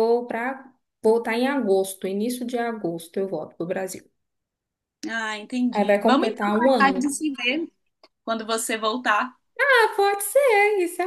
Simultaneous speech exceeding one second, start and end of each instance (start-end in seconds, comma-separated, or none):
5.8-7.0